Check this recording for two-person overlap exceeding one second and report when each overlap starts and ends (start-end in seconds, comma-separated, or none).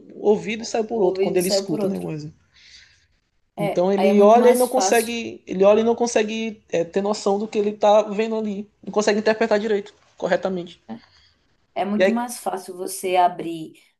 0.6-2.1, 3.6-5.2